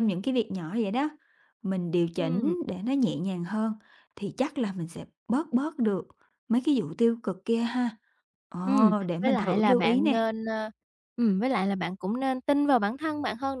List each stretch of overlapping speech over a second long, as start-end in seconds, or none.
8.7-10.3